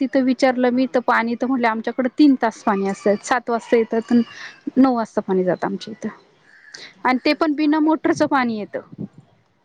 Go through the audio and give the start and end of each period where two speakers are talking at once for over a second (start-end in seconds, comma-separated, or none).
7.1-8.6